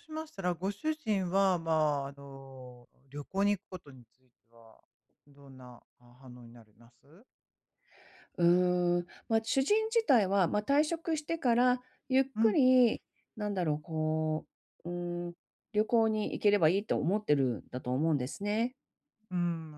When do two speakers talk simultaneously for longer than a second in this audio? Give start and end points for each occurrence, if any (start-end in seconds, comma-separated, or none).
none